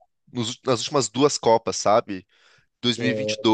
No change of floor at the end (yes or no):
yes